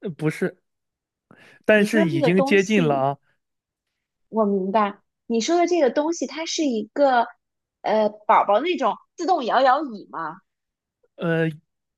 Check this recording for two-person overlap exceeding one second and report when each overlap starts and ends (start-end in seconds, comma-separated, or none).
1.8-3.1